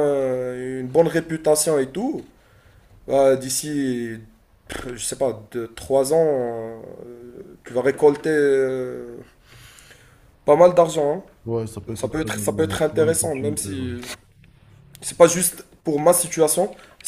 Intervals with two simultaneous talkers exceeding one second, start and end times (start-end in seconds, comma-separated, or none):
11.9-13.9